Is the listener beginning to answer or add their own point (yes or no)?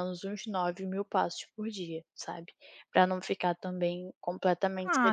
yes